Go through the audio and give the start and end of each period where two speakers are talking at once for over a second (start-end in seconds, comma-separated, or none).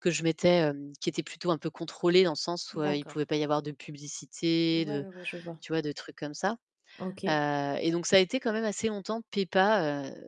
none